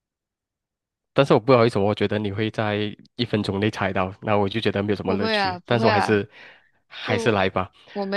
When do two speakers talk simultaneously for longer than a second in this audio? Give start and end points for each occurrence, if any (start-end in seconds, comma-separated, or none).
5.0-6.2